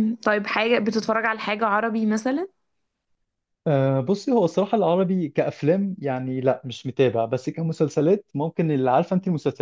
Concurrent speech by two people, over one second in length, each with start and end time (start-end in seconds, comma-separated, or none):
none